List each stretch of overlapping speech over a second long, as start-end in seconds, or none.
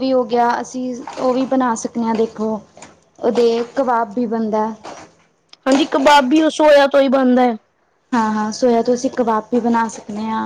none